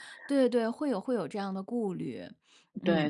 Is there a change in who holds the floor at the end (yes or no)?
yes